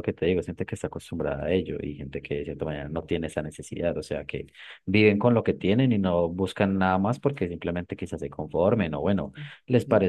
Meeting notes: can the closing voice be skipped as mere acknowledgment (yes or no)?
yes